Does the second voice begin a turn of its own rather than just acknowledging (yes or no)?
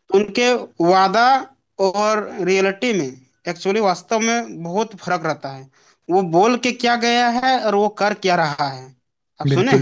yes